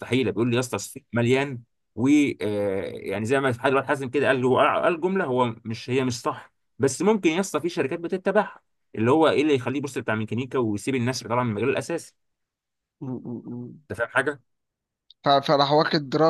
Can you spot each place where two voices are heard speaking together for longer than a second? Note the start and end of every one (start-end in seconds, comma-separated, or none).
none